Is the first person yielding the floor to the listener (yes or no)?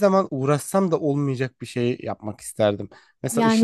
yes